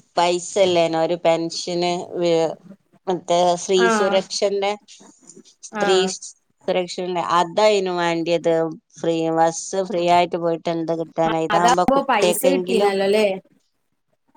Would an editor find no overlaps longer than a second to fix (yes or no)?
no